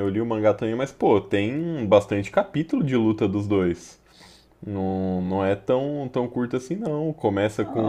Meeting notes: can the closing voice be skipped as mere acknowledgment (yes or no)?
no